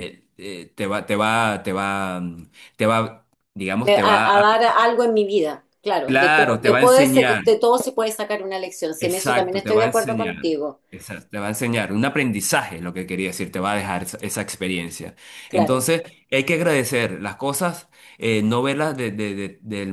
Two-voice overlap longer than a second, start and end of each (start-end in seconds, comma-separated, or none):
6.0-7.4, 9.0-10.3